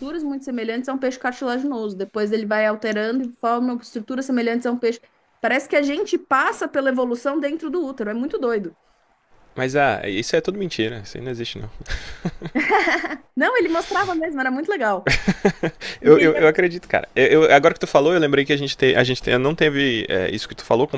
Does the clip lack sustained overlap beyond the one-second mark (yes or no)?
yes